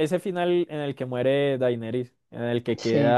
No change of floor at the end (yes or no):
yes